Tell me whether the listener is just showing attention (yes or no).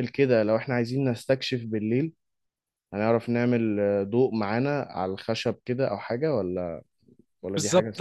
no